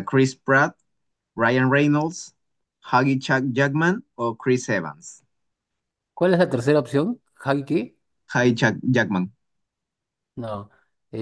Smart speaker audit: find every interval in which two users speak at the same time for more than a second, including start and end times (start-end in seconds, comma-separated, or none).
none